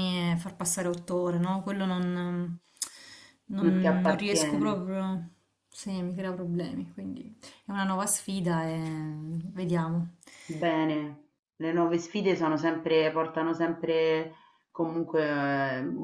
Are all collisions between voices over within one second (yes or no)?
no